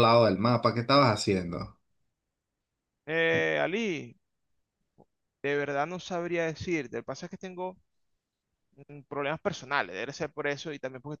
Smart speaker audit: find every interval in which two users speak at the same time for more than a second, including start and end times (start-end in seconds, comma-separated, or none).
none